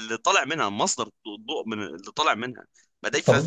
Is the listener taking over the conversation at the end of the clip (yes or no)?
no